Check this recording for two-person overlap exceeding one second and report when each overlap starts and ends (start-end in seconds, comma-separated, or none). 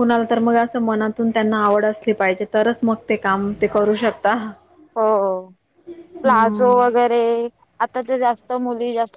none